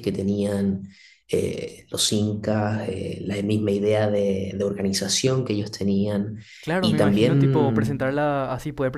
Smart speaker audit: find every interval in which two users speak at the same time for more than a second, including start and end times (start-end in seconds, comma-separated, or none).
6.8-8.2